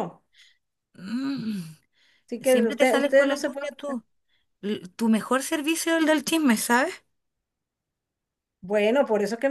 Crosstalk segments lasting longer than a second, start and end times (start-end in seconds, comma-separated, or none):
2.4-3.7